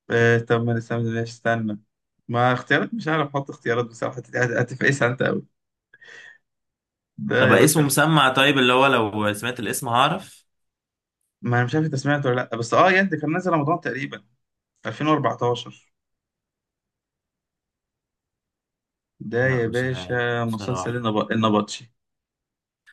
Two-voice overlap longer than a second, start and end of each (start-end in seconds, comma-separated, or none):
19.4-21.0